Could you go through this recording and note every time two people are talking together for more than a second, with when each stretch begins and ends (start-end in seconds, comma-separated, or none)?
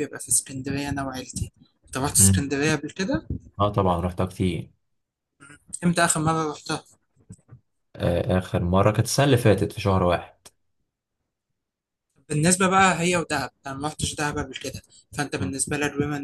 none